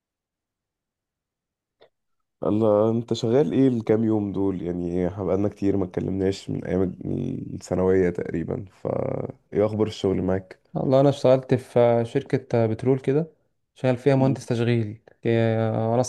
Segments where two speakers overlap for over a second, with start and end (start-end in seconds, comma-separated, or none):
none